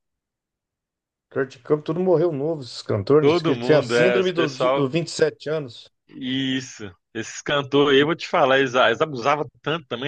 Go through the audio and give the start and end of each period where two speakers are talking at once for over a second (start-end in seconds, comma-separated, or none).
3.2-4.9